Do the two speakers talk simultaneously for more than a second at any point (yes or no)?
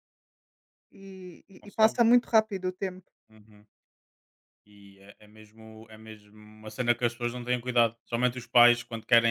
no